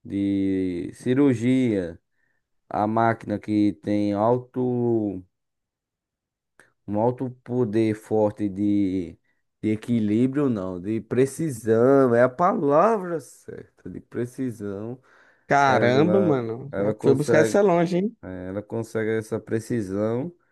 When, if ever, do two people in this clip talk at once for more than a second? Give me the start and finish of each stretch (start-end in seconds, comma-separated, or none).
15.7-17.6